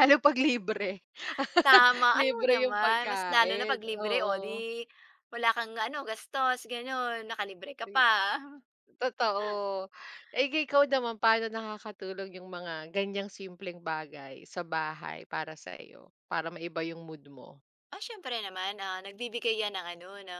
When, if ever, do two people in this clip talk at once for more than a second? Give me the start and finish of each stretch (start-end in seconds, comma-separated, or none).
2.2-4.3